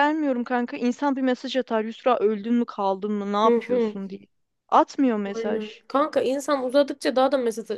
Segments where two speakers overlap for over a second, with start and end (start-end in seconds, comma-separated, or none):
none